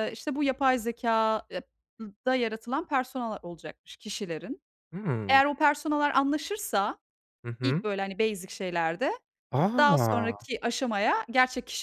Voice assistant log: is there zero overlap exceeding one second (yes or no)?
yes